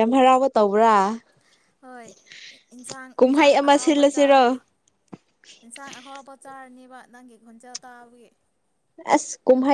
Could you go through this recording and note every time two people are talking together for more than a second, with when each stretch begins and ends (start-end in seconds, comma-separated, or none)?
3.1-4.6